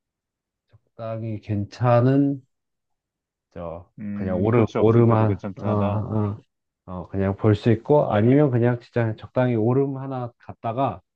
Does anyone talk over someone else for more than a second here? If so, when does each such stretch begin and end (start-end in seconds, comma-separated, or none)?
4.0-6.0